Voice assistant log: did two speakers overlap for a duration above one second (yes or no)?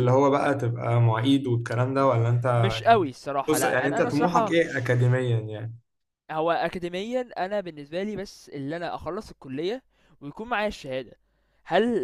yes